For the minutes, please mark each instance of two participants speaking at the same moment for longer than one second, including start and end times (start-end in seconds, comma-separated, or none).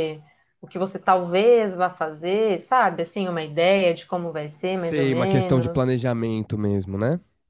4.7-6.0